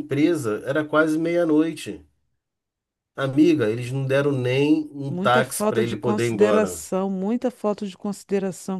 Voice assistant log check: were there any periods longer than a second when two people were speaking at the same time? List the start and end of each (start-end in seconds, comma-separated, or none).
5.1-6.8